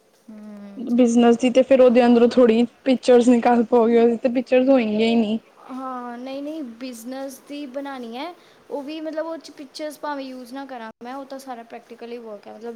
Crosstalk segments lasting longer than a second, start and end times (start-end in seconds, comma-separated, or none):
none